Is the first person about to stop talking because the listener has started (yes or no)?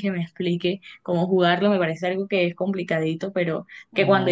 no